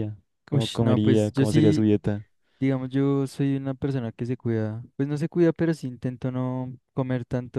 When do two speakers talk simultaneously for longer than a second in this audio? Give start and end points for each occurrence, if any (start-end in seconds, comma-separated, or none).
0.5-1.9